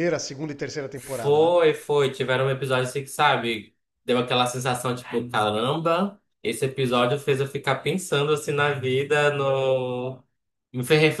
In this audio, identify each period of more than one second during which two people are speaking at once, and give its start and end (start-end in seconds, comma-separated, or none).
none